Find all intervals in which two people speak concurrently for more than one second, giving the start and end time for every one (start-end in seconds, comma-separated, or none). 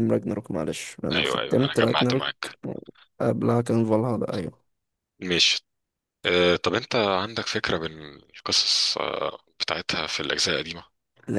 1.1-2.3